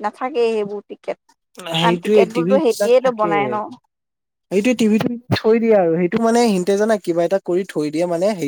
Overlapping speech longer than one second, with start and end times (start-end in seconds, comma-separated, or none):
1.8-3.3